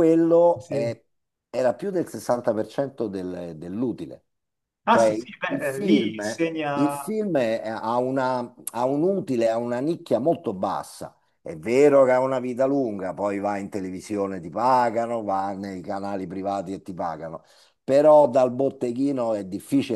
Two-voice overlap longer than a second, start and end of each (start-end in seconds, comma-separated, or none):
4.9-7.0